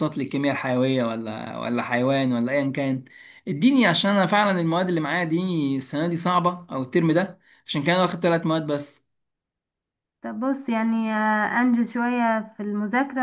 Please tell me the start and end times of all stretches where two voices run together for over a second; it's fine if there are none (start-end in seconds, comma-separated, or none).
none